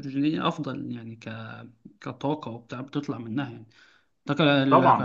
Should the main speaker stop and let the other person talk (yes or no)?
no